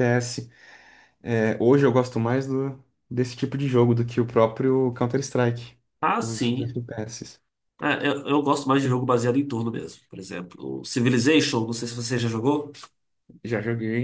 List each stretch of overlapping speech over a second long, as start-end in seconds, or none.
none